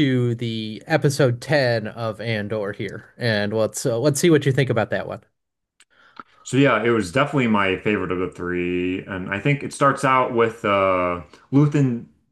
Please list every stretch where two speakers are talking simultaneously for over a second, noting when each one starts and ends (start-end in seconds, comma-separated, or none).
none